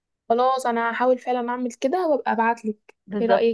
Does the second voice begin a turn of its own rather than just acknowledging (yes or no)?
yes